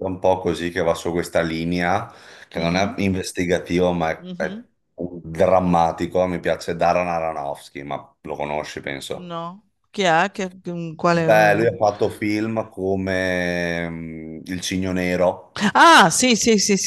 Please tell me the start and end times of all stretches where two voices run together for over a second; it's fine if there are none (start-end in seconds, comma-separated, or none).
none